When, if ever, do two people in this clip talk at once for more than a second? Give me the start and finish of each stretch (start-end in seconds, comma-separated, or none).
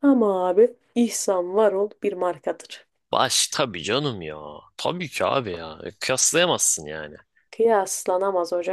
none